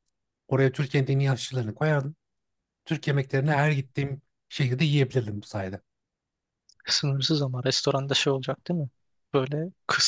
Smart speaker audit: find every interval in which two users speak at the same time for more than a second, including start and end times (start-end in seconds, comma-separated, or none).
none